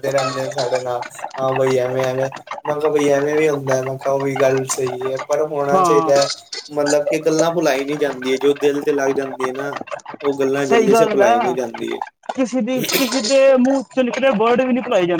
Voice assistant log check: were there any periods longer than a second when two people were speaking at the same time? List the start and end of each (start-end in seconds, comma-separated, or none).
none